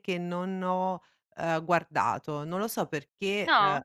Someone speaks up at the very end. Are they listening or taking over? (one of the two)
listening